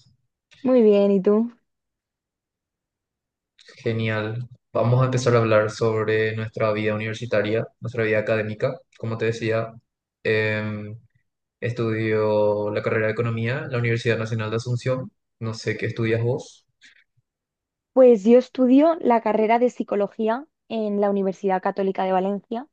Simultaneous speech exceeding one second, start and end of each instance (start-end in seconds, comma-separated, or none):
none